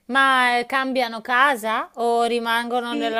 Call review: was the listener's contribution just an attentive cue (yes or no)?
no